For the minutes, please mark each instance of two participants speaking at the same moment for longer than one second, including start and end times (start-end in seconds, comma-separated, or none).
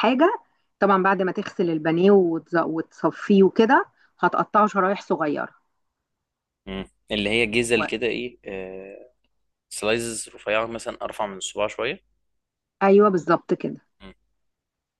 none